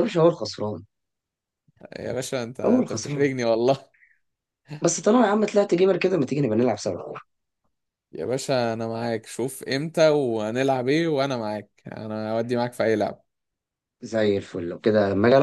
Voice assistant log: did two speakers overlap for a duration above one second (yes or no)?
no